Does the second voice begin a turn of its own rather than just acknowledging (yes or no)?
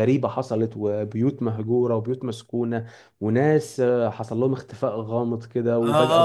yes